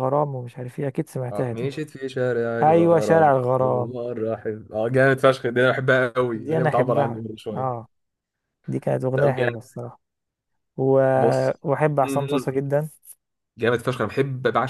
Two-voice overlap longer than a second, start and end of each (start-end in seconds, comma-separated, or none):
2.6-3.9, 6.3-7.9